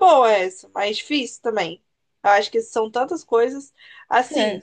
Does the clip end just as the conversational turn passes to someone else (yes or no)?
no